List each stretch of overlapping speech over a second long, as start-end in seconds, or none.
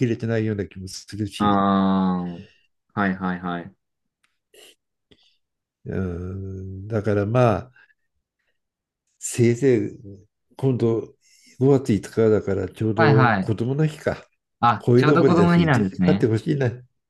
14.8-16.3